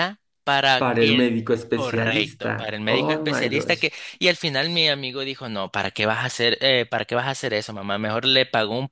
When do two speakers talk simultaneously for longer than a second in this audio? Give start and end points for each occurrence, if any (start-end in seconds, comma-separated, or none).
0.8-3.9